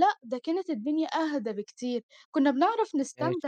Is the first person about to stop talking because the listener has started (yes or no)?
no